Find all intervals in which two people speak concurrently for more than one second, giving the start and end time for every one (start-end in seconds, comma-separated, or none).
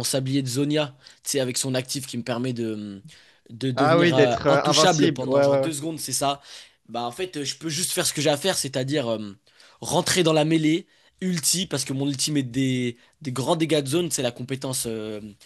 3.8-5.7